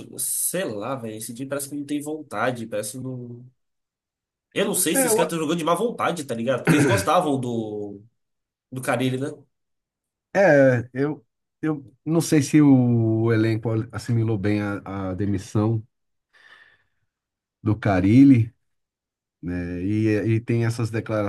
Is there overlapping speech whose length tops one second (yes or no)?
no